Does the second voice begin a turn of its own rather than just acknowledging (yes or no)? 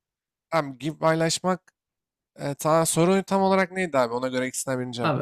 yes